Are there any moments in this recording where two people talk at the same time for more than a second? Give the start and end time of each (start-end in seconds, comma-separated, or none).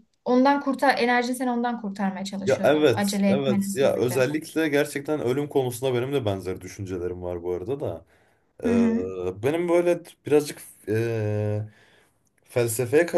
2.5-4.3